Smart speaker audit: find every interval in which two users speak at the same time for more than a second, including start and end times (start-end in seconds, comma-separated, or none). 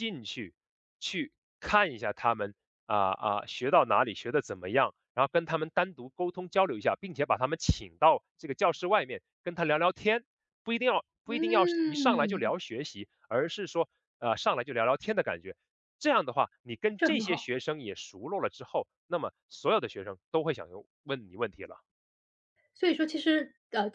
11.3-12.5